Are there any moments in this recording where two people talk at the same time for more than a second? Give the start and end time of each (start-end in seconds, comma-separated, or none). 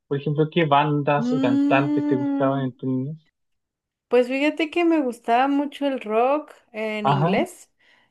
1.2-2.7